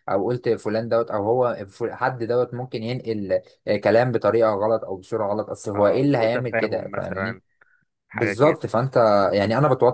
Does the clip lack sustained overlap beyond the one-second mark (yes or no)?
no